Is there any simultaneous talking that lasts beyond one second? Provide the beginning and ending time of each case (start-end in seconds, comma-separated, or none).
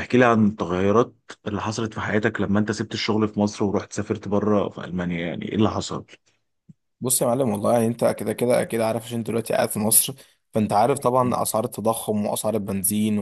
none